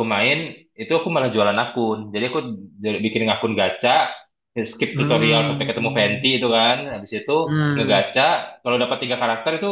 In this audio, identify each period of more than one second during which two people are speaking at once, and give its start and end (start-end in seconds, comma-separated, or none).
4.8-6.3